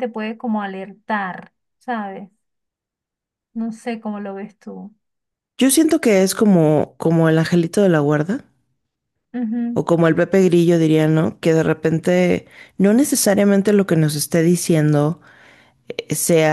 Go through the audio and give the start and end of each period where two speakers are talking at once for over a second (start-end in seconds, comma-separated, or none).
none